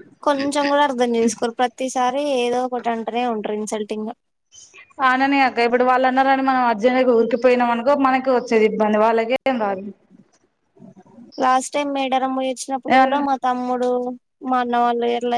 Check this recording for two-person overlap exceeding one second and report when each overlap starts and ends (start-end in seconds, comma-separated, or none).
none